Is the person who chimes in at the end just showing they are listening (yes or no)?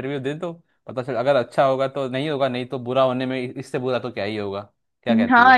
no